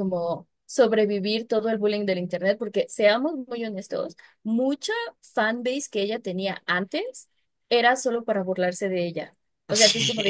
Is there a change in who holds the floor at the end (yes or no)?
no